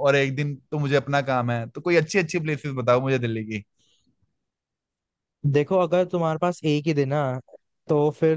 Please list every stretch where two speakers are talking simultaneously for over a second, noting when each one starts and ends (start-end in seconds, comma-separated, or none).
none